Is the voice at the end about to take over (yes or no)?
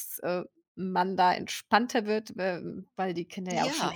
no